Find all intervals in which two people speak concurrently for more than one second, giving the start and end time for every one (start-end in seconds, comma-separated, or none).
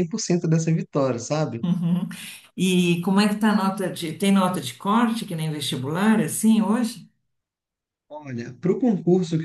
none